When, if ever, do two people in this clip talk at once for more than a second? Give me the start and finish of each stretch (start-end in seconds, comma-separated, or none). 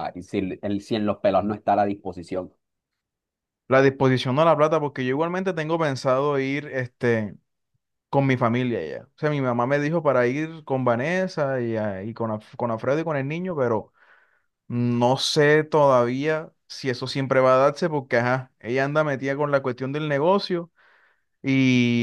none